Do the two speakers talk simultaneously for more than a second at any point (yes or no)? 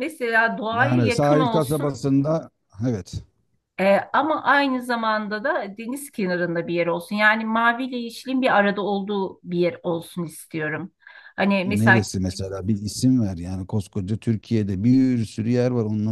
yes